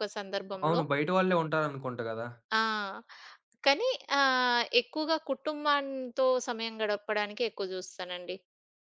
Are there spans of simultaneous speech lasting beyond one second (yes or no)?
no